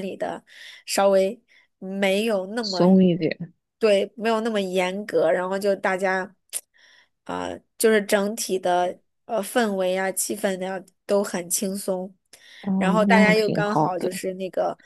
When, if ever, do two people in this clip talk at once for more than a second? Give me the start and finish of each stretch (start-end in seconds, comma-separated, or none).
12.8-14.1